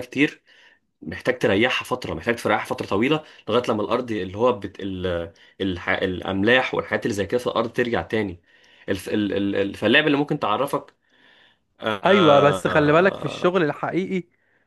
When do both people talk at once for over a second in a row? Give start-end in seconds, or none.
12.1-13.3